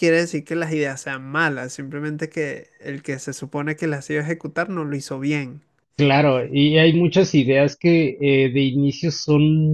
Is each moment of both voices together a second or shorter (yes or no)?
yes